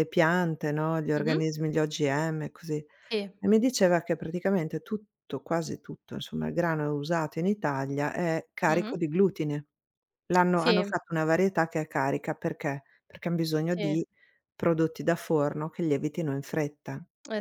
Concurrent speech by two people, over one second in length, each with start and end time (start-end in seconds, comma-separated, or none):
none